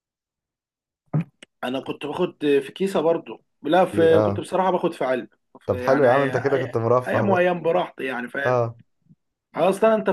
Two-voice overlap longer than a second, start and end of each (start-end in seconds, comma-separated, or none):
5.7-7.5